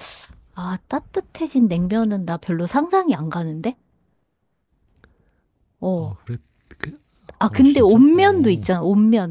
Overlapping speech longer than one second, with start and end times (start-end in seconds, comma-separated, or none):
7.5-8.7